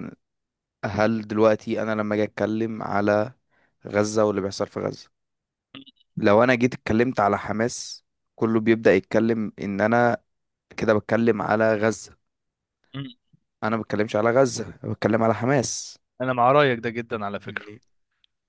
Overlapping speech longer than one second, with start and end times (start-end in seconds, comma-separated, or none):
none